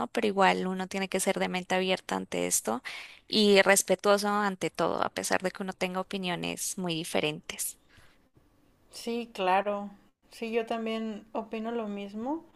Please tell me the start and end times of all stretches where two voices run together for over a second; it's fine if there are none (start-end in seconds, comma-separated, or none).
none